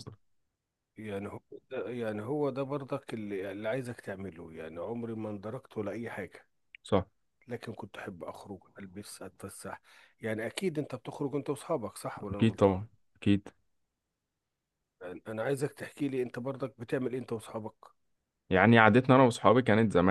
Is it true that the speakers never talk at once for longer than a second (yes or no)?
yes